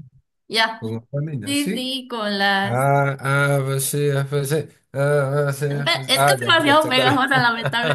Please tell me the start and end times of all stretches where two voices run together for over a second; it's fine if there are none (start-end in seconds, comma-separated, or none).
5.7-7.4